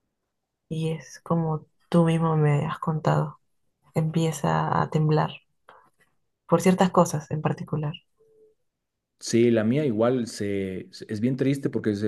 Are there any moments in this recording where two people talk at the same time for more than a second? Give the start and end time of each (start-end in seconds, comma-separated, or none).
none